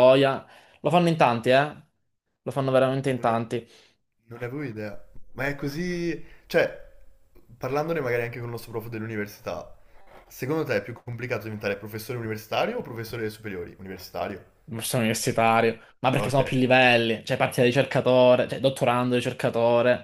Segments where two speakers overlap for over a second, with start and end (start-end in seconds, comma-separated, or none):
none